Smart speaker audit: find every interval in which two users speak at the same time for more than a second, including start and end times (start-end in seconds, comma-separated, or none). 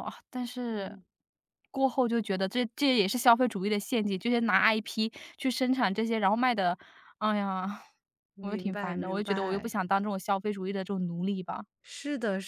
8.4-9.7